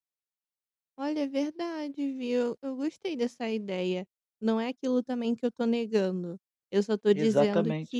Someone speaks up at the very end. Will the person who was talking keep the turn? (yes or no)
yes